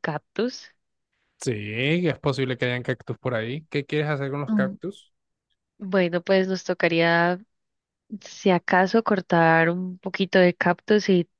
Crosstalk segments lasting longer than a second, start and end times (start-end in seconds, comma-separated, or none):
none